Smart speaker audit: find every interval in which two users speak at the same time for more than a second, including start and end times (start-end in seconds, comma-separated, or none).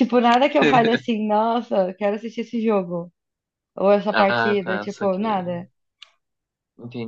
4.1-5.4